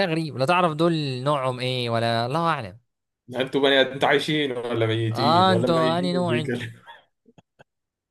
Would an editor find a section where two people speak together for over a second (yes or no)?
yes